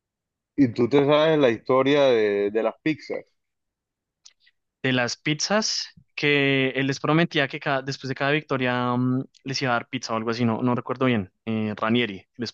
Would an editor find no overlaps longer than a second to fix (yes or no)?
yes